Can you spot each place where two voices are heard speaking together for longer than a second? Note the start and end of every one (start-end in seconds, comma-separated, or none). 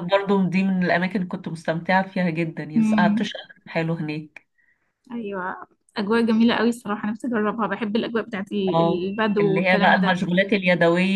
8.7-10.1